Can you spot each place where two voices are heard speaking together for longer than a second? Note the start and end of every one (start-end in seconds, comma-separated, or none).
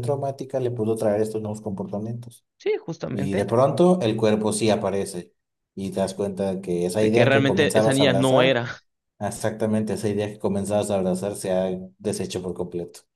7.0-8.6